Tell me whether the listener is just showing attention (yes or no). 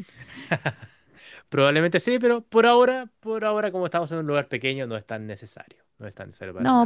no